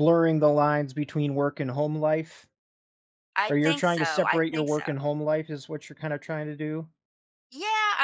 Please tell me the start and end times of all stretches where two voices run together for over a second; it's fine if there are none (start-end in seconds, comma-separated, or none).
3.5-4.9